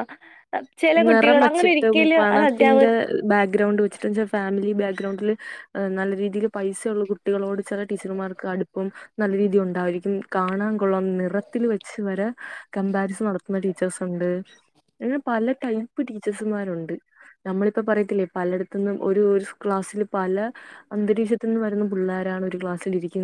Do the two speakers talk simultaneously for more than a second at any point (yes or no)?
yes